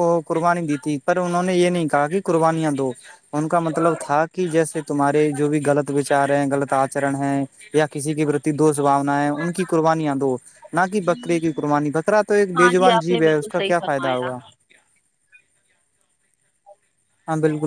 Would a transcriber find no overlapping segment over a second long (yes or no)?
no